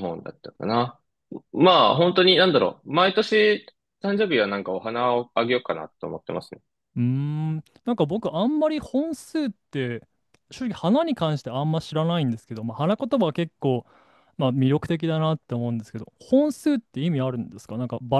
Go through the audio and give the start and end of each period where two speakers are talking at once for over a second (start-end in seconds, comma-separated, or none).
none